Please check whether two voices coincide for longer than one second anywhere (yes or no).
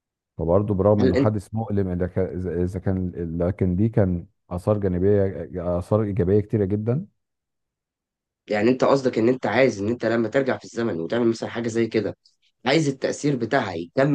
no